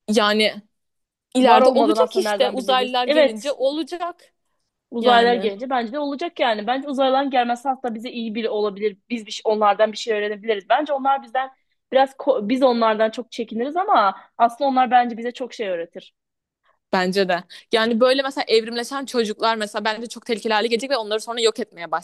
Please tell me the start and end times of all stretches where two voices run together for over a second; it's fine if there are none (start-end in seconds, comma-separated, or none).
1.4-3.5